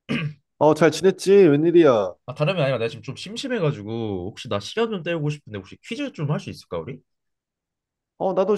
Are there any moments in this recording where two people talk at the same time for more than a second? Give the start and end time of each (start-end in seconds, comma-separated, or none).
none